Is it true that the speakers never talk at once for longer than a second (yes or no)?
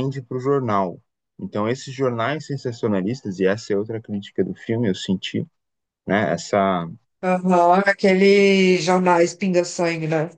yes